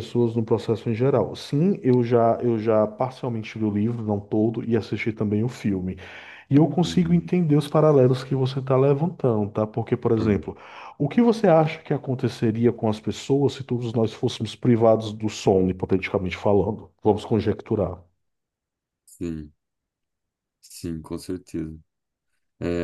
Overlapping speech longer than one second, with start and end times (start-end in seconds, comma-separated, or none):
none